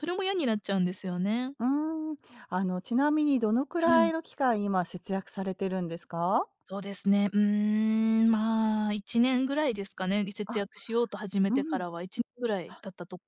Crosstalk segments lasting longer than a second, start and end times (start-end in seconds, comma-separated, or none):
none